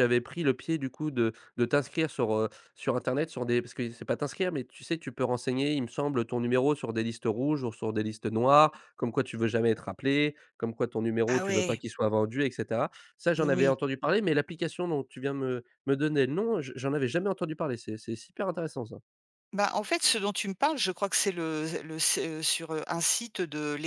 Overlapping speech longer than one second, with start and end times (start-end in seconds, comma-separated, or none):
none